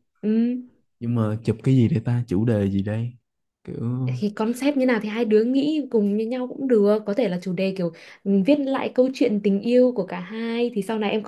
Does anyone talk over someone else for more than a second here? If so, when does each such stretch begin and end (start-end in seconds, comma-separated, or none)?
none